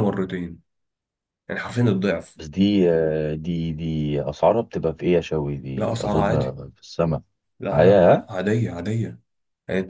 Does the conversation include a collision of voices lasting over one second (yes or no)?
no